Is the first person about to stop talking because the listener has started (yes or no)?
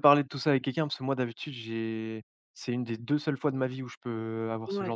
yes